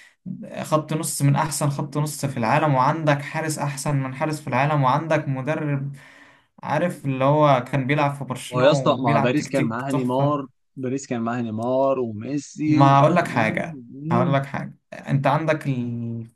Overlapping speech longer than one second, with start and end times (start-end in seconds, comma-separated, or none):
8.5-10.4, 12.7-14.4